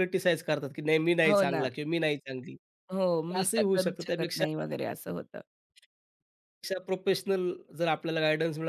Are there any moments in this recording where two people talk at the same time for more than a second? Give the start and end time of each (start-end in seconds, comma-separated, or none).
2.9-4.5